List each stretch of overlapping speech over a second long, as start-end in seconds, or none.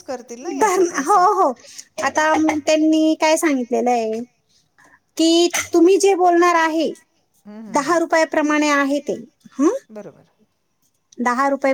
none